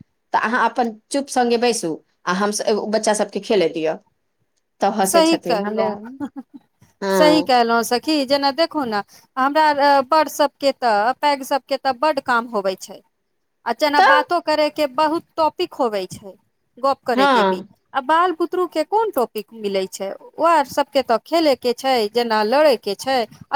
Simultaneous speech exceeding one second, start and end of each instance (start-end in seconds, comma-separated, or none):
none